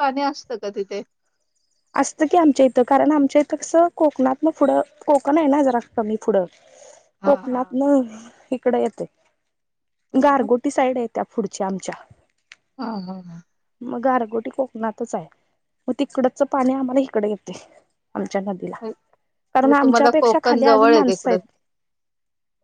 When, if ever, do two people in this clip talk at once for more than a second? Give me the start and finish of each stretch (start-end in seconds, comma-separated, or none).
19.6-21.4